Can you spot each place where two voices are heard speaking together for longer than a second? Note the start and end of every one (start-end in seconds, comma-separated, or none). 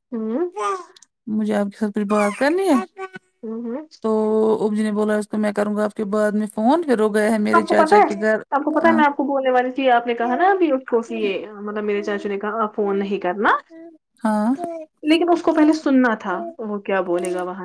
none